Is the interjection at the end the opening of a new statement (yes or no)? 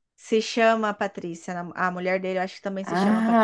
yes